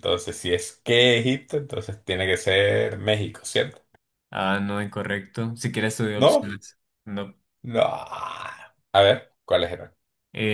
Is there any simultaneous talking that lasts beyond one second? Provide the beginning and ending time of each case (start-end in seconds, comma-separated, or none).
none